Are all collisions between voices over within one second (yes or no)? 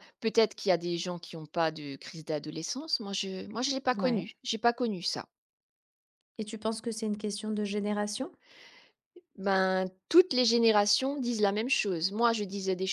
yes